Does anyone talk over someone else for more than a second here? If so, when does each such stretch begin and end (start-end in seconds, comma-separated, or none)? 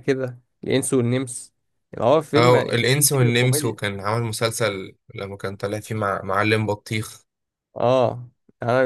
2.4-3.8